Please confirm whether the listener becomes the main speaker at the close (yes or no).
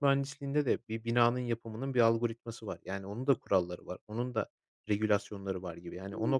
yes